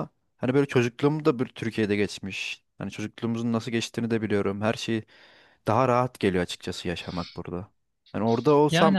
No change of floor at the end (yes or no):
yes